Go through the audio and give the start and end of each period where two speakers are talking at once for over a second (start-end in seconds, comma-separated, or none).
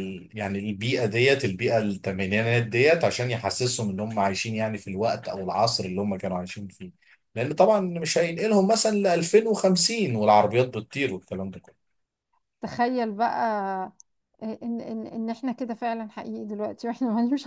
none